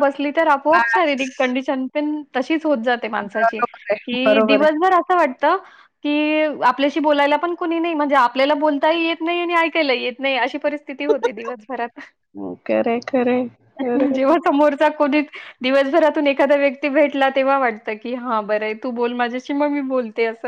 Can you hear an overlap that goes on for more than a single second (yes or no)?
yes